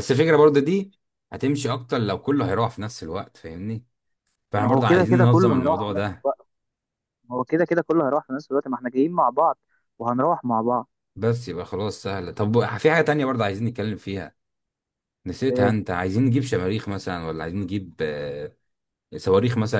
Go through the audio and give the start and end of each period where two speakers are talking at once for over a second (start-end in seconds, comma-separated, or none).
4.6-6.3